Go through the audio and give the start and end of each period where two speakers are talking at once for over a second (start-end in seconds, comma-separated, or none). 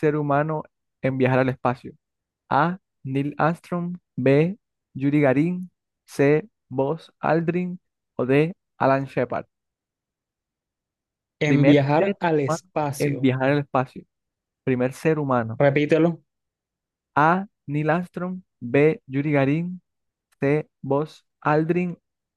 11.4-13.3